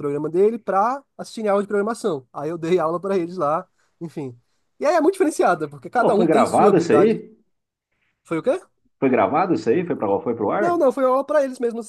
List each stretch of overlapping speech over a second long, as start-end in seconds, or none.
6.0-7.2